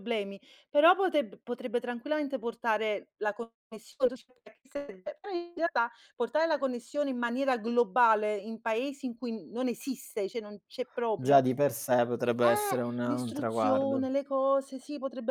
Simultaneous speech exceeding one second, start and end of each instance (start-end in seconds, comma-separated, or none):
12.4-14.1